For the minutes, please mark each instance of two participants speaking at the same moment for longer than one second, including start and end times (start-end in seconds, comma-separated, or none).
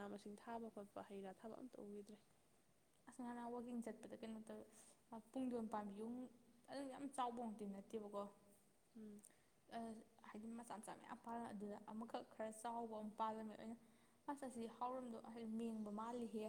none